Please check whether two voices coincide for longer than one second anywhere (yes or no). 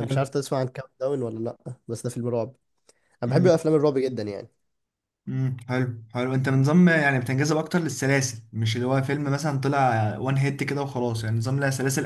no